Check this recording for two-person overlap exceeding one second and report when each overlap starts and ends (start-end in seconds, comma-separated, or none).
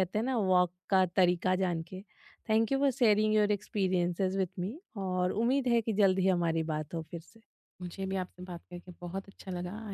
none